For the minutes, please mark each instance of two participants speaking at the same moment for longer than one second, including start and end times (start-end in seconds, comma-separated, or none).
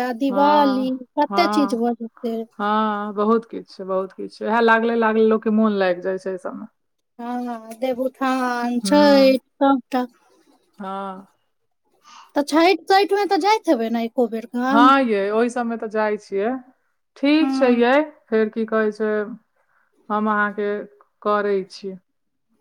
none